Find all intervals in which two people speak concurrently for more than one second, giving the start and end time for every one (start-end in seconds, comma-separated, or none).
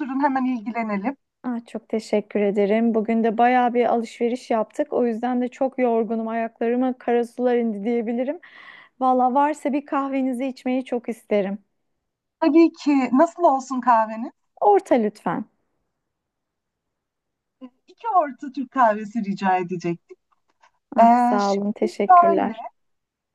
21.0-22.5